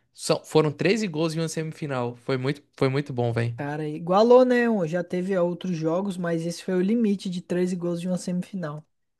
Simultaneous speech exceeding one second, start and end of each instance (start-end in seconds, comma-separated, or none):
none